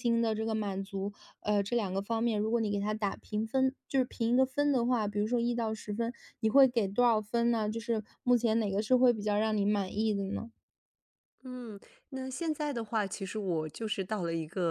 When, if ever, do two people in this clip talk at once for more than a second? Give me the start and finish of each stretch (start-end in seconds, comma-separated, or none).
none